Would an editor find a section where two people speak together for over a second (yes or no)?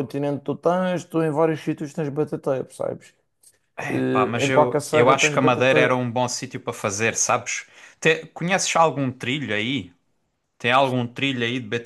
yes